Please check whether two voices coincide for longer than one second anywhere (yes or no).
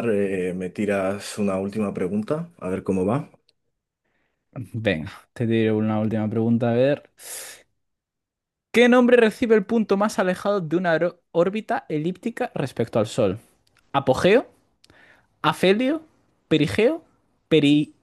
no